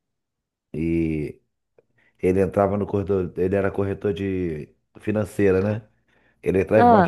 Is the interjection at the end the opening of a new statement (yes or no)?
no